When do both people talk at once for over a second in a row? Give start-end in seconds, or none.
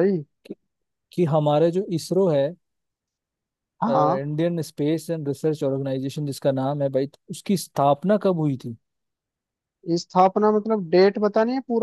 none